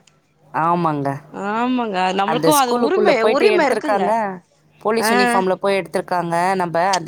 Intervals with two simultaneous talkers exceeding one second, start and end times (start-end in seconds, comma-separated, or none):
2.3-4.0